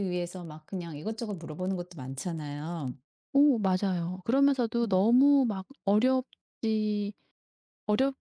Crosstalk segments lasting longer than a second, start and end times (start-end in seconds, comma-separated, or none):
none